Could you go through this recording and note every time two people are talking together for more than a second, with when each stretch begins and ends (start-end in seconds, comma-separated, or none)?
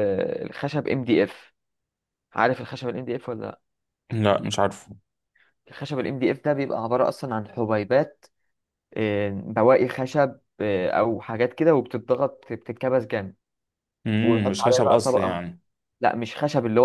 14.2-15.4